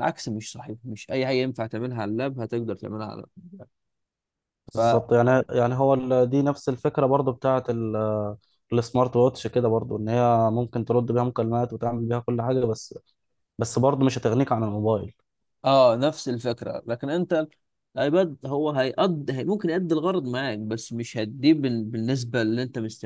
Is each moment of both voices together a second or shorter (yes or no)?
yes